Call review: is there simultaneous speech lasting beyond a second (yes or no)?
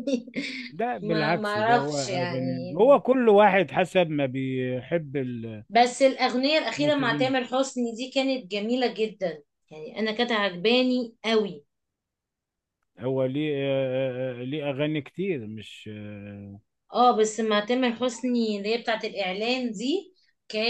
yes